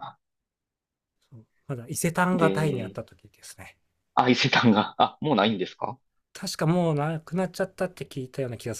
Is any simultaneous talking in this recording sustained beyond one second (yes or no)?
no